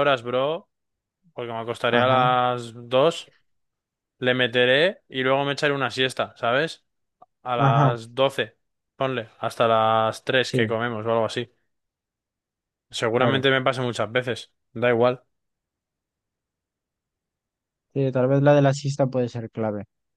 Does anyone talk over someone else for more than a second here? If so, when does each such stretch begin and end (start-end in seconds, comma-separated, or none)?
none